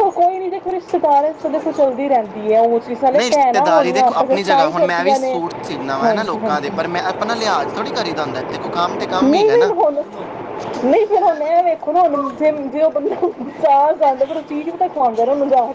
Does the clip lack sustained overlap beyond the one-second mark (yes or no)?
no